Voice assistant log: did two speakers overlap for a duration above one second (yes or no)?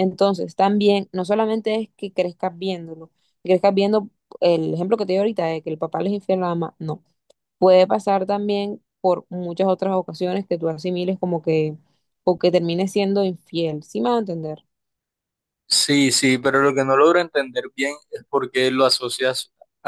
no